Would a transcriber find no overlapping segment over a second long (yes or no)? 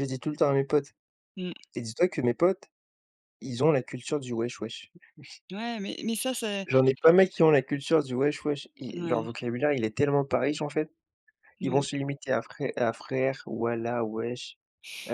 yes